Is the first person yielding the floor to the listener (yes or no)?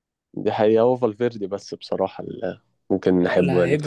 yes